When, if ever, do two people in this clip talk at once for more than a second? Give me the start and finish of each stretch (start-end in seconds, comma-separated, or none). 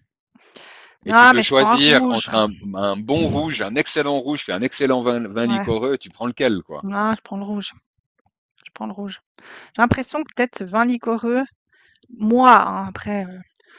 1.1-2.3